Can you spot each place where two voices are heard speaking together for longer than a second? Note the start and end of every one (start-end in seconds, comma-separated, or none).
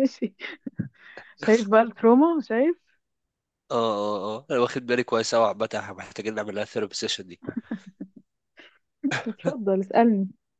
none